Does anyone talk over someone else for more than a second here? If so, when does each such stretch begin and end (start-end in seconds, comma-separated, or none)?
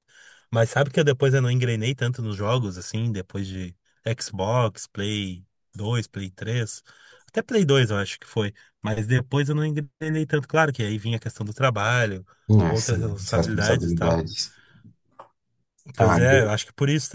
12.7-14.2